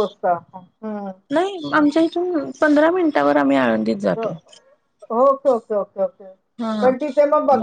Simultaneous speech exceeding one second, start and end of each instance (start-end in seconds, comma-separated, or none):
none